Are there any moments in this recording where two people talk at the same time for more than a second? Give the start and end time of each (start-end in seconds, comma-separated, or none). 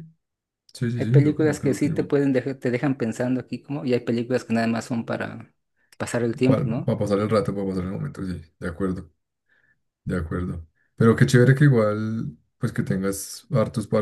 0.9-2.1